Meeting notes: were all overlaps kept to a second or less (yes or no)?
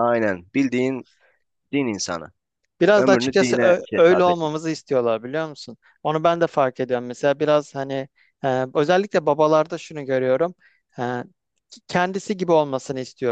no